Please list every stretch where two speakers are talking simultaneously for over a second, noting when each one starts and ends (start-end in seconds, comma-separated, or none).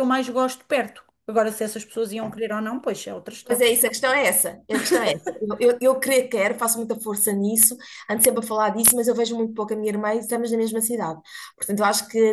none